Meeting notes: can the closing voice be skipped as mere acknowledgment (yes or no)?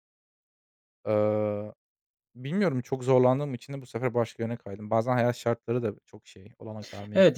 no